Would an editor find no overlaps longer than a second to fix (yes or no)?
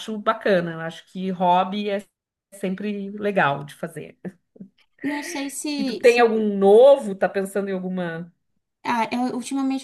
yes